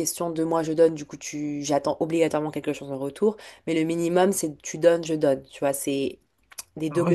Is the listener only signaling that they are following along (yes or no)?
no